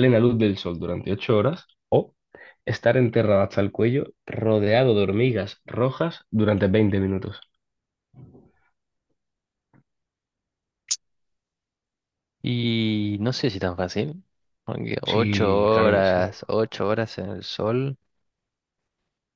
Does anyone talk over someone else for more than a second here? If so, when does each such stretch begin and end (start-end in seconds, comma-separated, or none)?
15.1-16.3